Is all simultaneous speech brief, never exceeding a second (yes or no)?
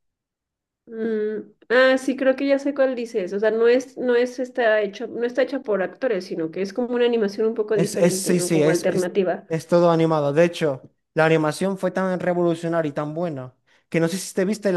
no